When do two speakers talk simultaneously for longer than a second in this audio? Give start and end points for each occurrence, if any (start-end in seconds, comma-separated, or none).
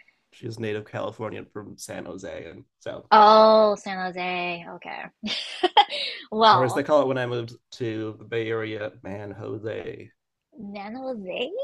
none